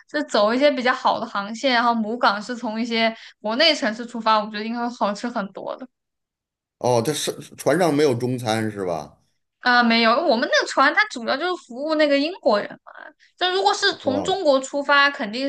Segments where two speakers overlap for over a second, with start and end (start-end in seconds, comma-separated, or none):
none